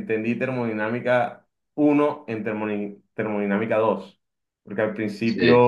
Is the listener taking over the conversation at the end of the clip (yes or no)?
no